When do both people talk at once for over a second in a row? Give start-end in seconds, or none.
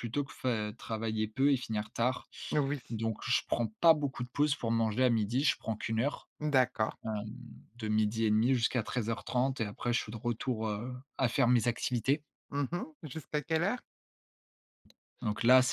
none